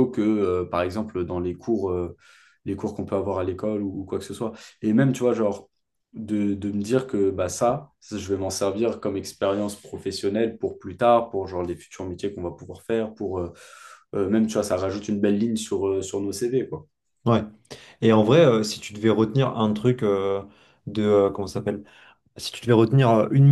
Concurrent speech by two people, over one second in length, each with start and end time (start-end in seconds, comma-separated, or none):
none